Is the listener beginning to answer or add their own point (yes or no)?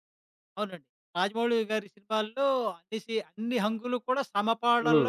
yes